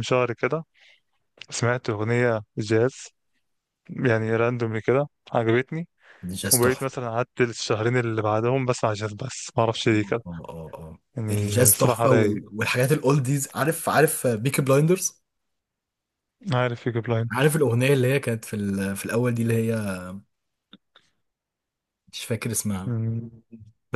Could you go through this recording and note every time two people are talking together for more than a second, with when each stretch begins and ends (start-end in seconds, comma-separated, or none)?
11.2-12.4